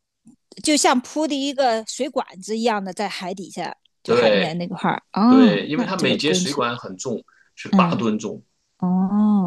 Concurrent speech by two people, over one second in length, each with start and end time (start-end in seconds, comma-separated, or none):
5.3-6.6